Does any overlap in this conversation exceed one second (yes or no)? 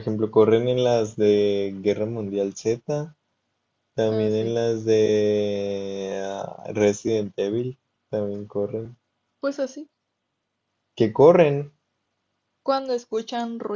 no